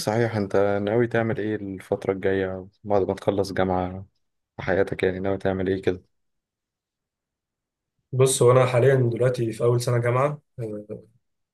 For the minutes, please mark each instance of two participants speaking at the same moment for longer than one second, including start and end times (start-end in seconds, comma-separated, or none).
none